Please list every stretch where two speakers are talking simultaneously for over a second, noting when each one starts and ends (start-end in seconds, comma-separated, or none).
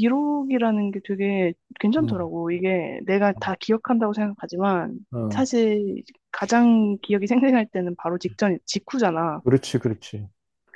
none